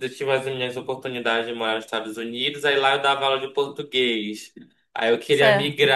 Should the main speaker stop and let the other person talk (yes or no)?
no